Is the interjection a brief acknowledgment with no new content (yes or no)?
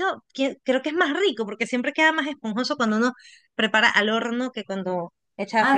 no